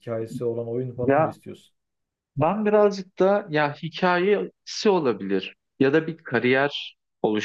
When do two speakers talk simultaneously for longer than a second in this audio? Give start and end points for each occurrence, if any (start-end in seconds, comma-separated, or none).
none